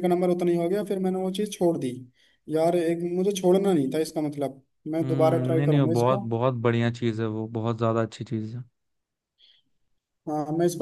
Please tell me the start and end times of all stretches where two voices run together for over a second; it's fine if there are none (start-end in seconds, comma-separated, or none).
5.0-6.2